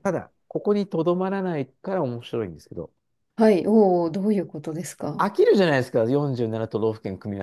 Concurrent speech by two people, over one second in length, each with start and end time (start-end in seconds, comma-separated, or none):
none